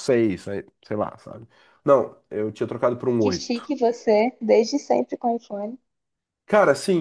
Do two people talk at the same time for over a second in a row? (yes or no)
no